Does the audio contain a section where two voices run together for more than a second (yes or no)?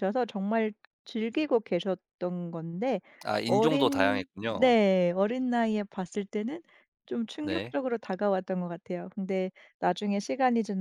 yes